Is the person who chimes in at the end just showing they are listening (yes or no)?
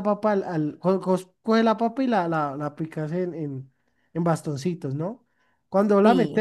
yes